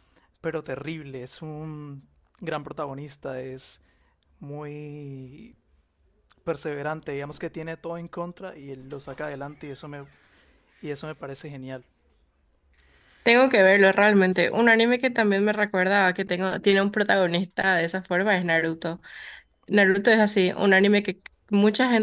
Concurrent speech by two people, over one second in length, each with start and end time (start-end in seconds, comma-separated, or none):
none